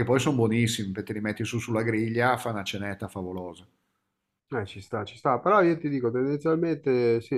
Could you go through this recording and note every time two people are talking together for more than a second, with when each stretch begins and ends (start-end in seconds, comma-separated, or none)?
none